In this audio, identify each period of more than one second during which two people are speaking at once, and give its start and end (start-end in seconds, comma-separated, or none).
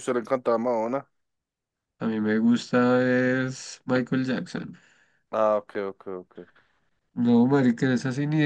none